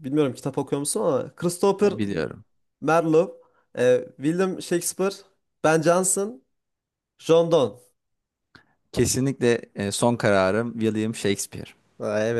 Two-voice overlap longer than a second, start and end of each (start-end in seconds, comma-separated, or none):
none